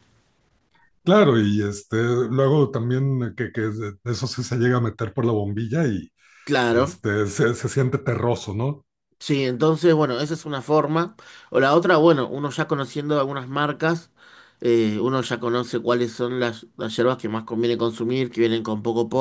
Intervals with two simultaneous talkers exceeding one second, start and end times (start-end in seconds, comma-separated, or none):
none